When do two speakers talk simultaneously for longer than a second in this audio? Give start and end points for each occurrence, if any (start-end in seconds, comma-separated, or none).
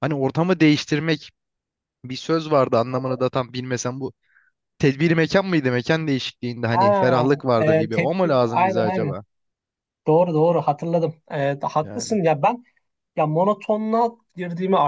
6.7-9.2